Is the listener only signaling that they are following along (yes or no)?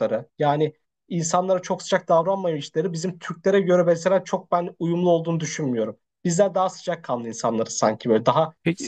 no